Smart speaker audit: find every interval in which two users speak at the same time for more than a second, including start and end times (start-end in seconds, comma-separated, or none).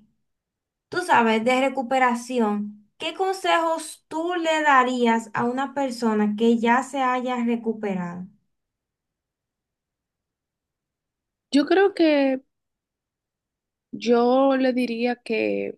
none